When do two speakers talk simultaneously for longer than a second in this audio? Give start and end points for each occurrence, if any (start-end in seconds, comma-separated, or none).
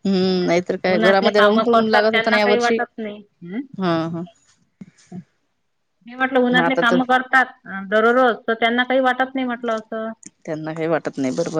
0.9-2.8